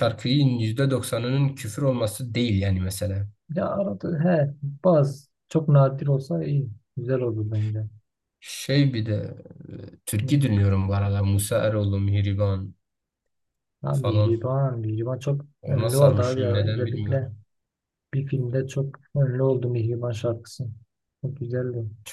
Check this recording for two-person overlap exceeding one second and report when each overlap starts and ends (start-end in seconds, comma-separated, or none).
15.6-17.3